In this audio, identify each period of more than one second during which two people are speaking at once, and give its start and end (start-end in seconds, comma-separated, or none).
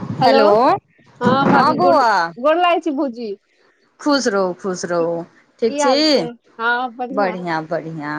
none